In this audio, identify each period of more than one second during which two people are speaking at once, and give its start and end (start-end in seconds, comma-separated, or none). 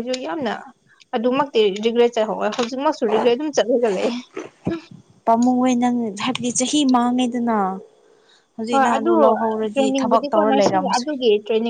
9.7-11.1